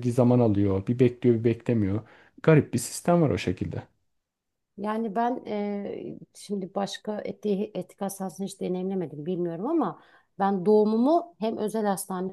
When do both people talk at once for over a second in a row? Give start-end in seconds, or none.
none